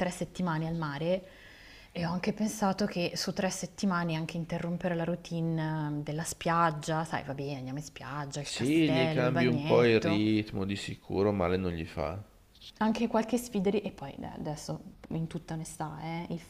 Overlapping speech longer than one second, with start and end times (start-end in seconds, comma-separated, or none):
8.4-10.3